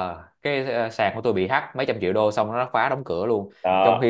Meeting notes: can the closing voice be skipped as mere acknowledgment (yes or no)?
yes